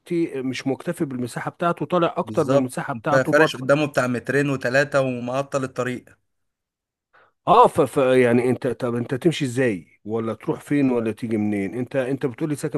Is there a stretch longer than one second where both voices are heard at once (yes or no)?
yes